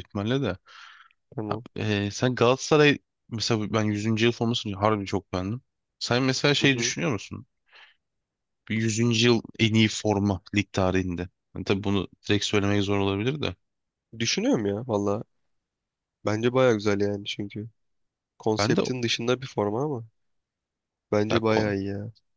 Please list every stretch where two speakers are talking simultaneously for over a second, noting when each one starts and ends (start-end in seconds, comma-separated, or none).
none